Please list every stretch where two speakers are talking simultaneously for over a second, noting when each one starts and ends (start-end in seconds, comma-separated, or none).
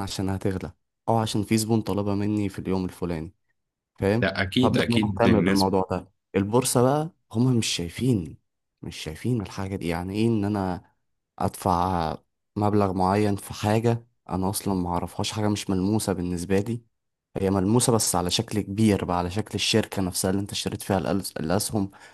4.2-5.7